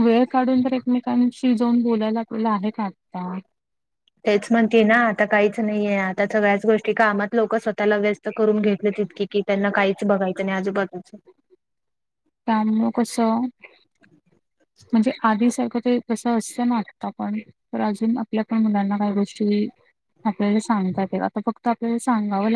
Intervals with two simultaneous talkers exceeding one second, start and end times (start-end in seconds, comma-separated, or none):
none